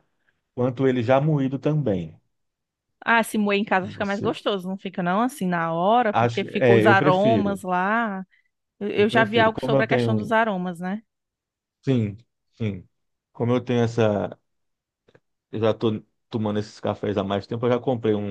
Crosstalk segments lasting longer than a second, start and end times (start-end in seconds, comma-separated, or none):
6.1-7.6, 8.9-10.3